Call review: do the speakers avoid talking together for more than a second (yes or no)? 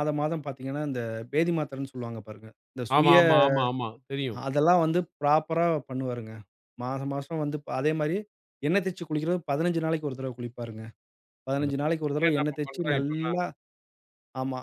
no